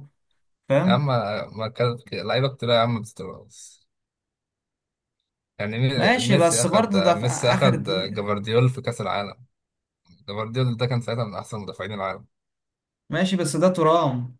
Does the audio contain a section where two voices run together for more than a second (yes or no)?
yes